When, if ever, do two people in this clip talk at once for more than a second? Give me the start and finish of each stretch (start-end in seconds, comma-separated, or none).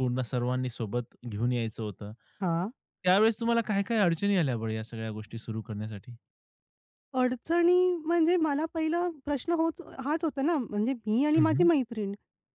none